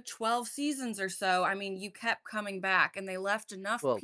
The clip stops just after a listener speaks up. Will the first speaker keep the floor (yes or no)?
yes